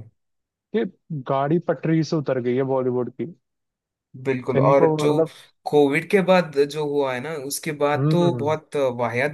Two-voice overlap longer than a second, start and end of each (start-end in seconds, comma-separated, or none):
none